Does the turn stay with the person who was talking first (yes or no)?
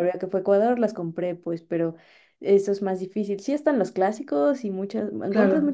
yes